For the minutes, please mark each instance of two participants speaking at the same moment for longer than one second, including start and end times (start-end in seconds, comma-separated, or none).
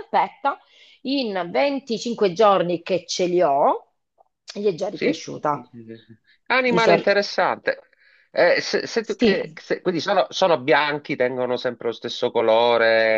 none